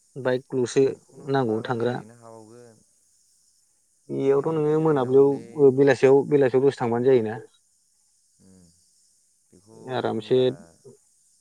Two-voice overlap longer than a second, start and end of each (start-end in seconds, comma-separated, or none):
4.3-5.9